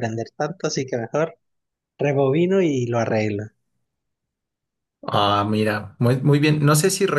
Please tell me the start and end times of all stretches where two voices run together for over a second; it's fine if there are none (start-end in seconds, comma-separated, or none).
none